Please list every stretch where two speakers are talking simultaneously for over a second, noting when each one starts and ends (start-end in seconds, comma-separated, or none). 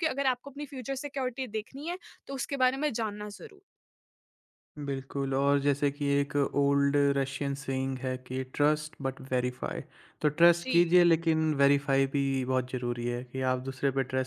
none